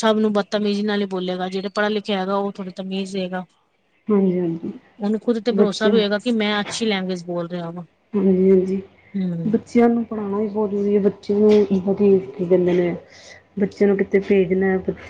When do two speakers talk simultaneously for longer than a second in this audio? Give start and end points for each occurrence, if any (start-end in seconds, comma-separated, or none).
none